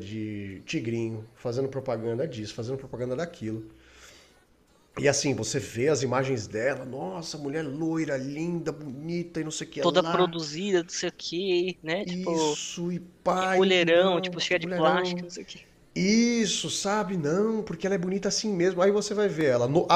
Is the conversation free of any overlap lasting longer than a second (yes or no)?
no